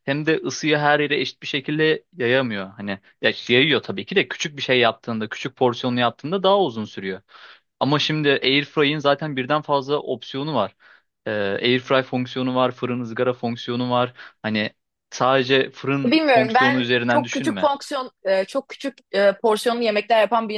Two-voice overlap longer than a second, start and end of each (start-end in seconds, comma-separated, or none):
16.0-17.7